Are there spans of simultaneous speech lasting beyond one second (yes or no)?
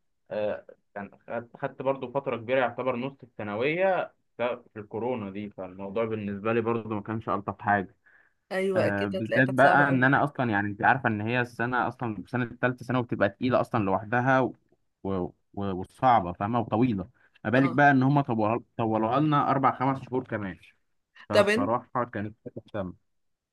yes